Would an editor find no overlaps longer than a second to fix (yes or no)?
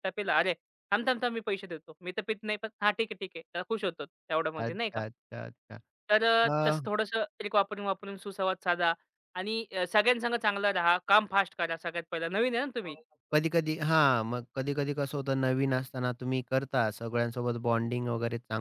yes